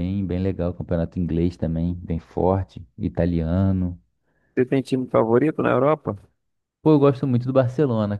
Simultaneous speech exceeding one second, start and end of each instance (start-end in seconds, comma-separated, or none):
none